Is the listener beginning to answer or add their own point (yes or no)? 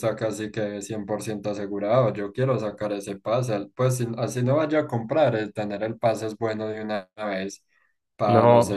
no